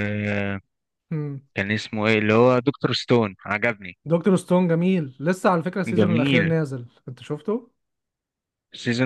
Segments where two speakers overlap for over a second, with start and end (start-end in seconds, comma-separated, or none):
none